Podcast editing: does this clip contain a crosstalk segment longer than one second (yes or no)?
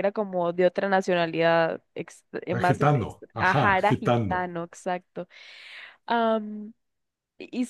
yes